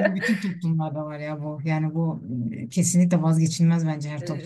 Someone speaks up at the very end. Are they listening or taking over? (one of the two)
taking over